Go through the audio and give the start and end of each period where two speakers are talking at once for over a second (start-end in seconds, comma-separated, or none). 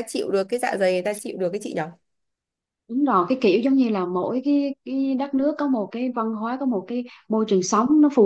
none